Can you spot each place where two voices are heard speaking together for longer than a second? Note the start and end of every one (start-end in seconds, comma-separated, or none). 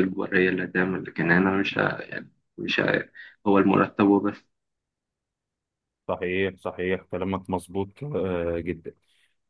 none